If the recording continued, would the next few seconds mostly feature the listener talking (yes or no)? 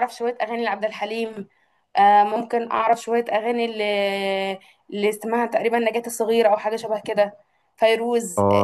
yes